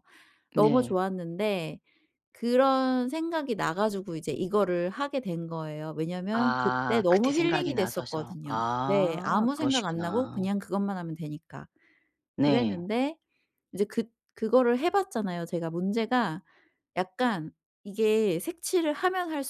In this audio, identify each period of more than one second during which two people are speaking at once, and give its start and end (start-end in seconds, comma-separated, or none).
6.3-10.5